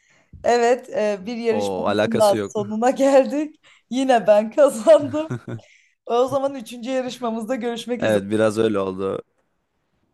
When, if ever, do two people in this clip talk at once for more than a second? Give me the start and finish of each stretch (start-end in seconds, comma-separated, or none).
1.5-2.8